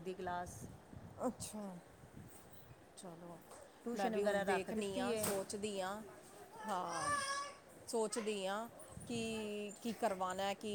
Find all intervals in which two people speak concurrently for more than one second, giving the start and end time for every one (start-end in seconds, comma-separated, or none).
3.9-5.3